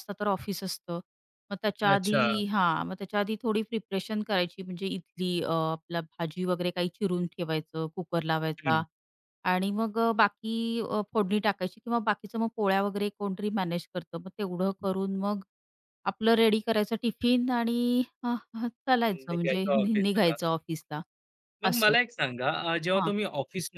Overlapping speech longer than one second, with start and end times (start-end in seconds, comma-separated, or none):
19.1-20.4